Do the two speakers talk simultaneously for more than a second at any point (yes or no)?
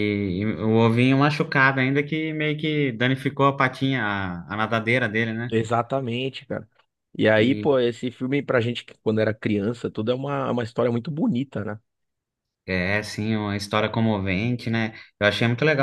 no